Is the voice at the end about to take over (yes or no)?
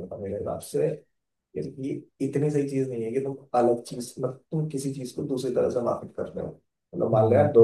yes